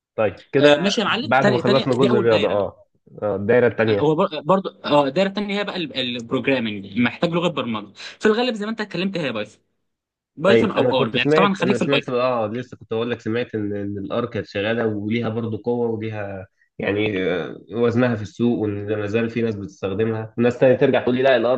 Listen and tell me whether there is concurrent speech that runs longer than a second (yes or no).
yes